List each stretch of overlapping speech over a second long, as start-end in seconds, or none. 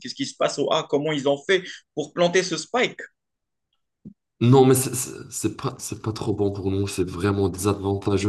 none